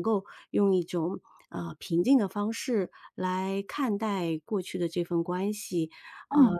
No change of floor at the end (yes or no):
yes